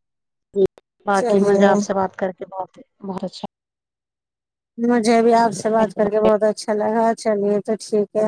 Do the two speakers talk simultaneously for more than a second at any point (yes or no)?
no